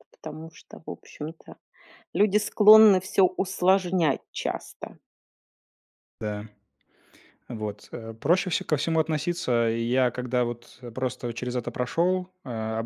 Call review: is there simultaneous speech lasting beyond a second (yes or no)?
no